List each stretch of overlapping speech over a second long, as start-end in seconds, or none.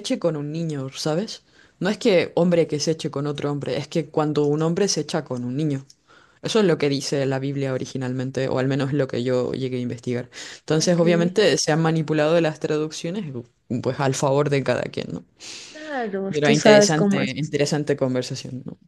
16.3-17.6